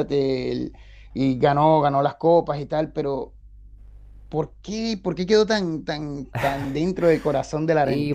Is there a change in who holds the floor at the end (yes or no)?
yes